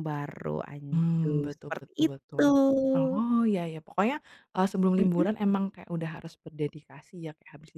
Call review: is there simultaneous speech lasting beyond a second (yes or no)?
yes